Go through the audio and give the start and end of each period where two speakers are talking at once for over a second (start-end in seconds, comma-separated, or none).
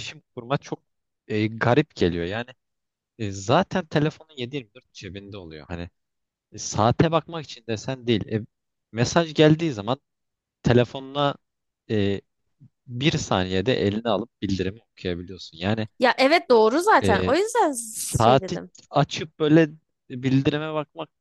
none